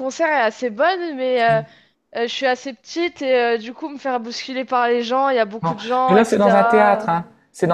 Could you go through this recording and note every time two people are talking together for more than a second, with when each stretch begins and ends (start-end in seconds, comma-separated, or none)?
5.6-7.1